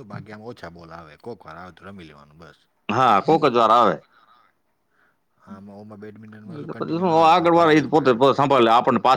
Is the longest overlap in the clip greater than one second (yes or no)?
yes